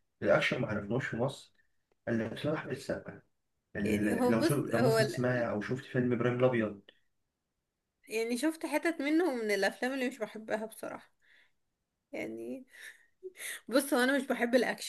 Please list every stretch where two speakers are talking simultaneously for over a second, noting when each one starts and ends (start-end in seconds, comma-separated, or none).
3.8-5.5